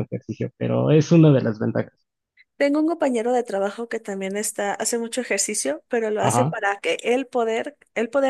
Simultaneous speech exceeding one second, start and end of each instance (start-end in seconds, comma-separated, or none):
none